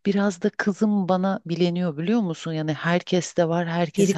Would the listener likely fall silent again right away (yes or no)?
yes